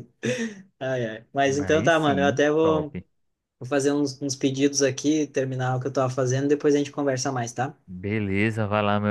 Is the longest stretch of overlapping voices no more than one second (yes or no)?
no